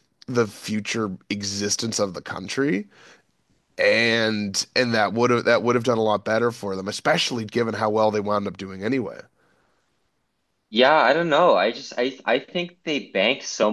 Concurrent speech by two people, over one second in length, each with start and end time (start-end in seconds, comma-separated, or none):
none